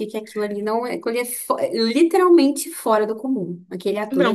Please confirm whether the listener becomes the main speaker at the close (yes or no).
yes